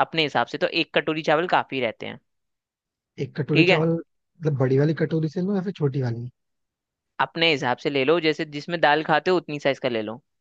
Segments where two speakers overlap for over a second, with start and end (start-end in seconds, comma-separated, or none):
none